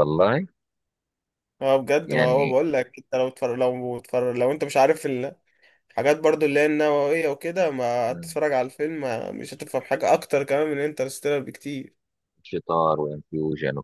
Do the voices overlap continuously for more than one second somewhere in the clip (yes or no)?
no